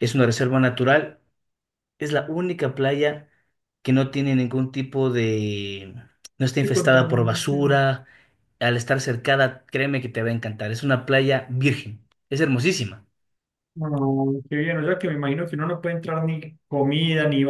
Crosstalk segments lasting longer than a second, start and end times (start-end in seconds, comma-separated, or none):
6.6-7.8